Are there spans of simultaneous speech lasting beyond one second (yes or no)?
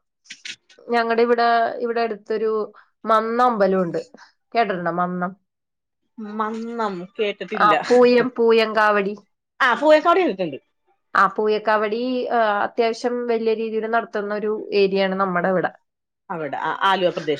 no